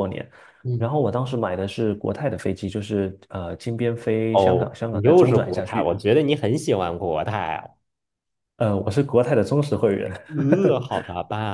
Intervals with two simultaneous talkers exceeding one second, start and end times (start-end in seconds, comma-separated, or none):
4.3-5.9